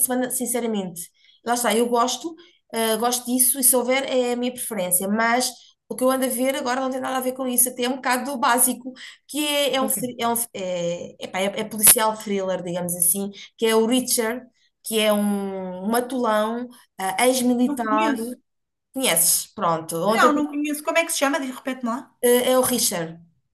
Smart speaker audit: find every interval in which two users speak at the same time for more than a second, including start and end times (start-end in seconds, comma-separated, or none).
none